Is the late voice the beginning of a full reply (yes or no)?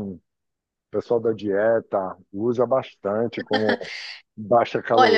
yes